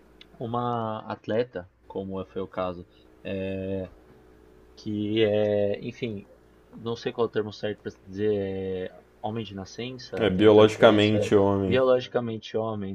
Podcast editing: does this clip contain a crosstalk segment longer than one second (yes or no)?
yes